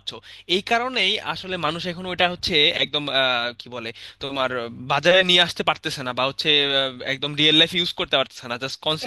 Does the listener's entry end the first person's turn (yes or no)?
no